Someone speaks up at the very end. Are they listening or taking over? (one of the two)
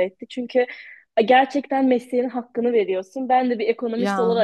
listening